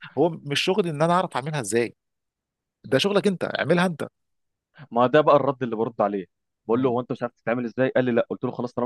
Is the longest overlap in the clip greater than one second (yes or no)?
no